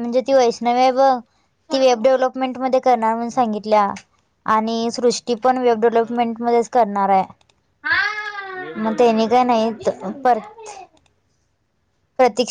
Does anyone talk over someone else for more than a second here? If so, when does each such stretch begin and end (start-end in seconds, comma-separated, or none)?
none